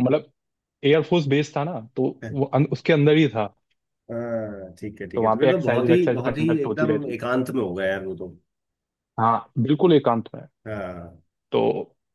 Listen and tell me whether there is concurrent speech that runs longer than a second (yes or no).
yes